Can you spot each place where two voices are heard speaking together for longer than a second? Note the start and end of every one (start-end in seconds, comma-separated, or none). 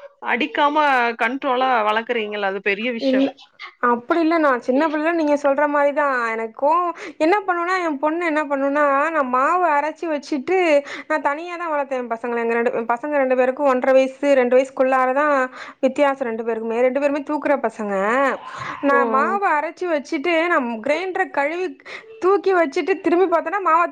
none